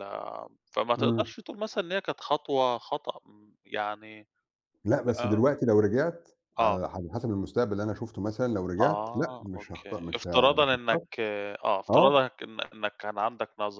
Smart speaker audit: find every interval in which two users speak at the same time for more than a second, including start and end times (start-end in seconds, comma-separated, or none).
8.8-11.0